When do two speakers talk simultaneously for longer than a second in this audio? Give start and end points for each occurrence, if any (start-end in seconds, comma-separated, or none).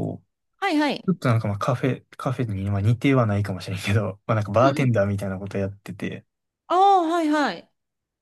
none